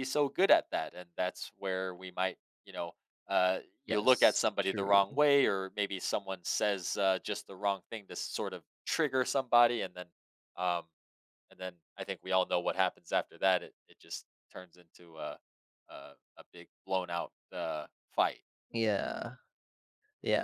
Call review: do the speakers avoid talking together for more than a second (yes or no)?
no